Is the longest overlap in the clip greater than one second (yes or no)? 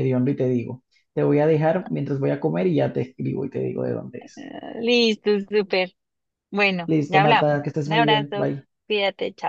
yes